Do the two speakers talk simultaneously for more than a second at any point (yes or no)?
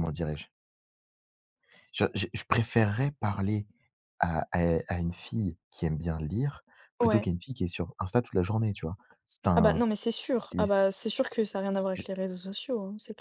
no